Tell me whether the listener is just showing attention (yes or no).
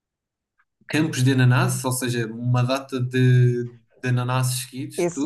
no